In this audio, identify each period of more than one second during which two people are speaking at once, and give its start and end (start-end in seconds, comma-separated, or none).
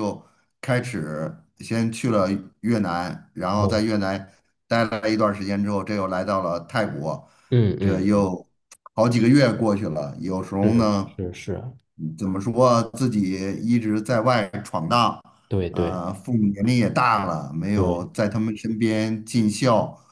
none